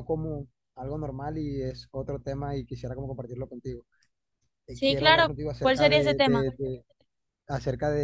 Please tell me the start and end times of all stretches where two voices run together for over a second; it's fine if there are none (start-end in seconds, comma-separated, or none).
4.7-6.5